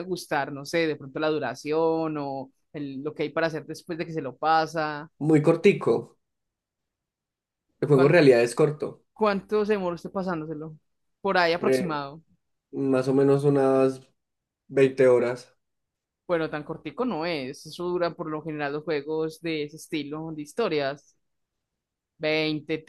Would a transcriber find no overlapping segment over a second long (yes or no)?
yes